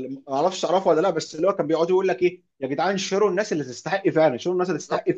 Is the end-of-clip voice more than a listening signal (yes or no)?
no